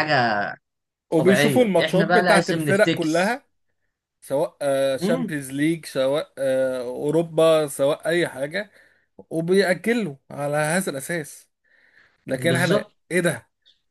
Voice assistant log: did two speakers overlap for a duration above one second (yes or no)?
yes